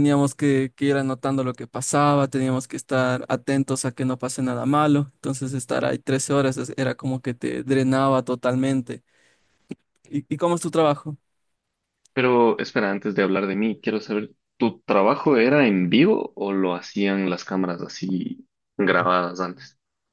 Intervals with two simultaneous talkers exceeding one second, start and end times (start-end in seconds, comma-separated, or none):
none